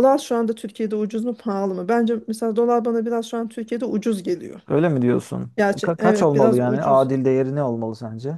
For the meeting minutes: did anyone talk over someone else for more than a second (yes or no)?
yes